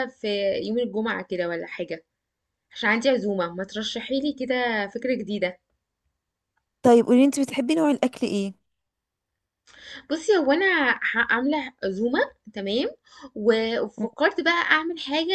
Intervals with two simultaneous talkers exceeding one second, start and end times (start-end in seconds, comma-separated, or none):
none